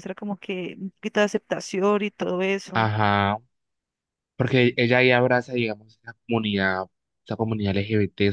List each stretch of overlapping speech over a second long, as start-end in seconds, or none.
none